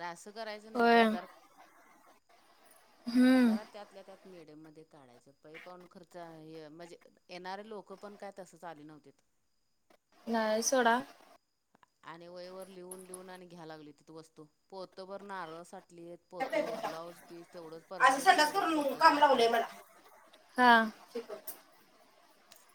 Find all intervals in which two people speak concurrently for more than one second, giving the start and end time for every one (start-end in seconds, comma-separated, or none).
18.0-19.6